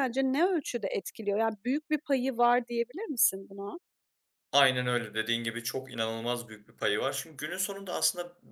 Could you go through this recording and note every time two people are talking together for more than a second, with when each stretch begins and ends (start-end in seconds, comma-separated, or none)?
none